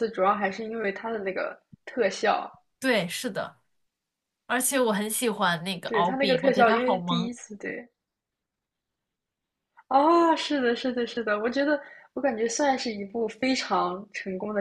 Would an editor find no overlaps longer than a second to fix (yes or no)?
no